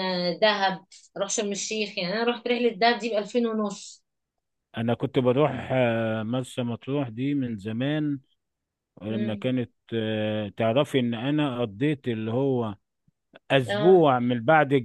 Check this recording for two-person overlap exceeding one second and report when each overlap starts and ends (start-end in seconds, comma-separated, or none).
none